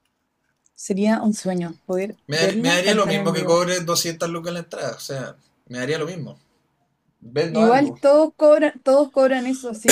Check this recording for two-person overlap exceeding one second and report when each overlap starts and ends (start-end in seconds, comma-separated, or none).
2.3-3.7